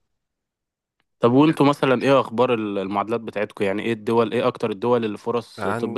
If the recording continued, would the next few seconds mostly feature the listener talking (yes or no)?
yes